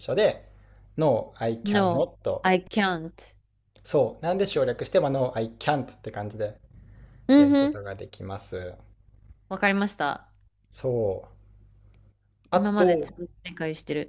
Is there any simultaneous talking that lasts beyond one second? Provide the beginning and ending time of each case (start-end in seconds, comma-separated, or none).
none